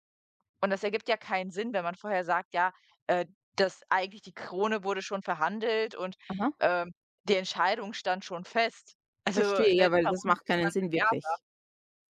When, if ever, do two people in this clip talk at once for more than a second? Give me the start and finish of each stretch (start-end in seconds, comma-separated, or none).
9.3-11.1